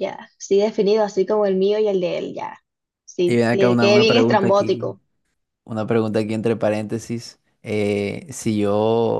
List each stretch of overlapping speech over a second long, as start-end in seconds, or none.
3.2-4.9